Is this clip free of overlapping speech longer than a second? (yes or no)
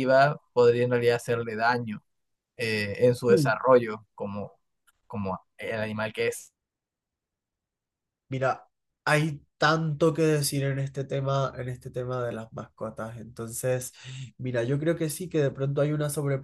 yes